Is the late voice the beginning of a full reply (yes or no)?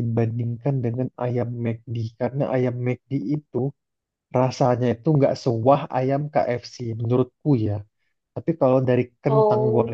no